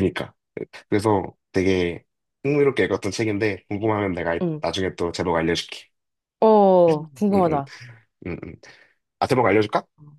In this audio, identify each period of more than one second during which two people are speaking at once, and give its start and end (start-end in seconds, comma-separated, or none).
none